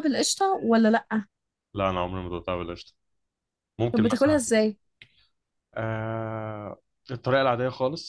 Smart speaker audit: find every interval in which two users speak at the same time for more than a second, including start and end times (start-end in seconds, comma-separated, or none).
none